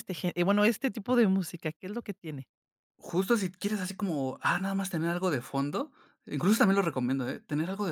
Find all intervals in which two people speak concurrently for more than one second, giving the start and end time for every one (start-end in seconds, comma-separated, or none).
none